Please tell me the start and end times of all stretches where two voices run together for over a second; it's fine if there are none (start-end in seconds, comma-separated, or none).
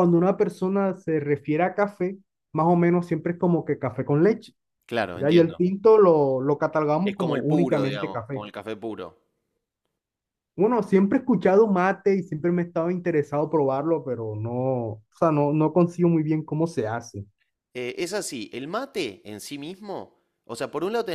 7.0-8.4